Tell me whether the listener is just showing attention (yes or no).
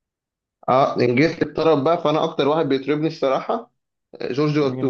no